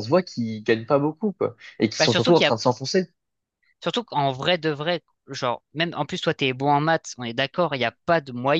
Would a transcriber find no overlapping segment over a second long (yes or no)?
yes